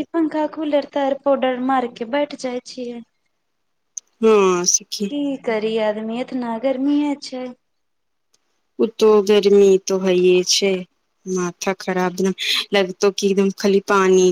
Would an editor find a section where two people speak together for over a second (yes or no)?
no